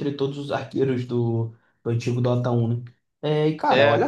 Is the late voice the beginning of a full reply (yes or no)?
no